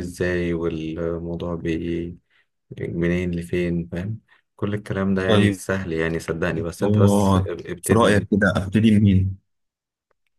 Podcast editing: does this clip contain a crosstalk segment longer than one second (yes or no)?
yes